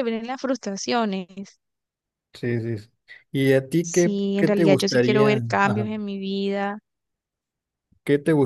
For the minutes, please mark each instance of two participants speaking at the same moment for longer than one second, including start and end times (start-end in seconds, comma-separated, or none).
3.8-5.9